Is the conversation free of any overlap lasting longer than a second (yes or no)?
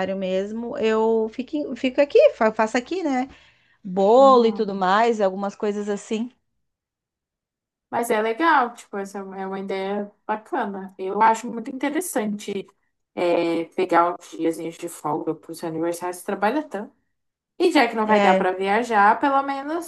yes